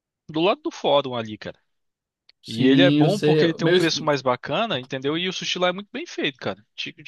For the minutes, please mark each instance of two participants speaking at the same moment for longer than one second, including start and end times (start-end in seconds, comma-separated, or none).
2.5-3.9